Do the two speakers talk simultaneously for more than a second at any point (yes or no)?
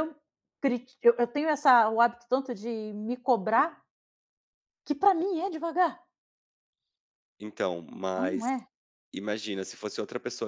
no